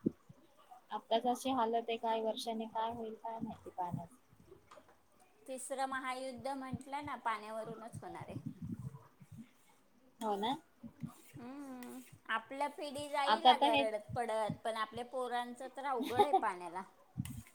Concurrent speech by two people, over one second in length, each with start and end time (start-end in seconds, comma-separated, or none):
none